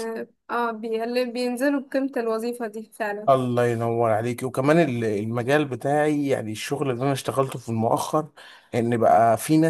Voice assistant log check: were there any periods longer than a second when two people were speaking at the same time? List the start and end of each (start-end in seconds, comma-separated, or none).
none